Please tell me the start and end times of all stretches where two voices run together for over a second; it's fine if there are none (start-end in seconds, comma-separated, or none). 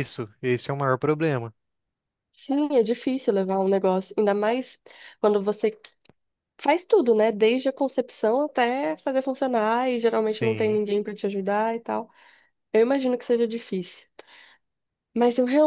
none